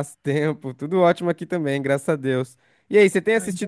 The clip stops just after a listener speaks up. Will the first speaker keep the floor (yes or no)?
yes